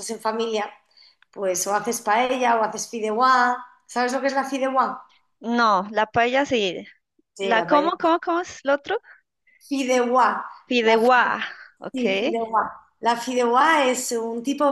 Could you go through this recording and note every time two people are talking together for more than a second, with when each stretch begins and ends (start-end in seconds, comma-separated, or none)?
none